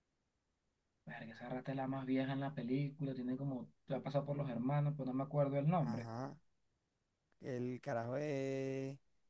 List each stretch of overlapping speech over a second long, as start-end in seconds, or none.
none